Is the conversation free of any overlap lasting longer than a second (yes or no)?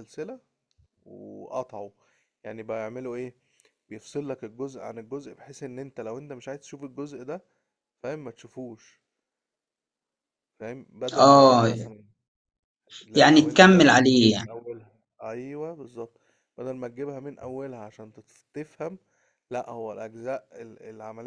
no